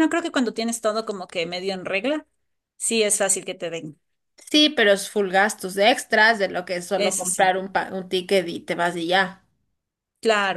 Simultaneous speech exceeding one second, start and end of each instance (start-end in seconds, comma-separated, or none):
none